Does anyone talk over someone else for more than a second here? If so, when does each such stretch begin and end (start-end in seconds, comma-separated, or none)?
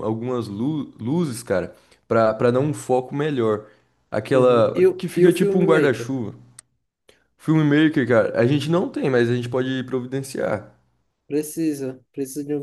4.3-6.1